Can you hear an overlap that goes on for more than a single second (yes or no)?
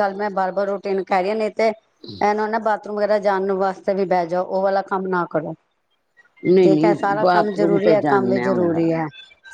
yes